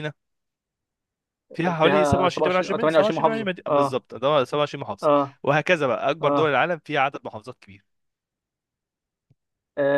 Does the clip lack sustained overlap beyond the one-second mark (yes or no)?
no